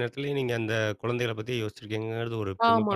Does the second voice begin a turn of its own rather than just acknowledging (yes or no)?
yes